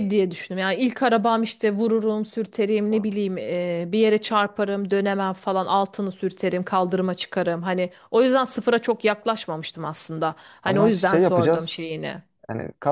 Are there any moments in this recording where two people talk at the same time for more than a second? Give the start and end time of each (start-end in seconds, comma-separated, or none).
10.7-12.0